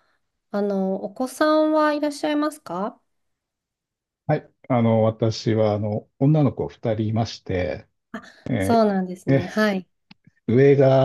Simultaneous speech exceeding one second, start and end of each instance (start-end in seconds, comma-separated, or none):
none